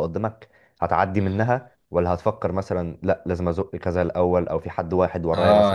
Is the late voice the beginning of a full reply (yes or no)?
yes